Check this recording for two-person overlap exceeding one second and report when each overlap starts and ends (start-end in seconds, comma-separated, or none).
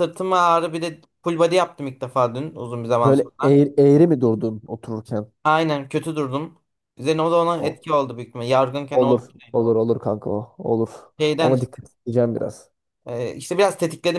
none